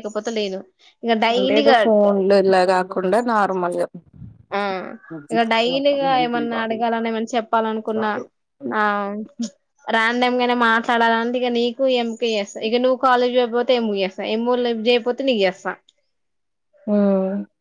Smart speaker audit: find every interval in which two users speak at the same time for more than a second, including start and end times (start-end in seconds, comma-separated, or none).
none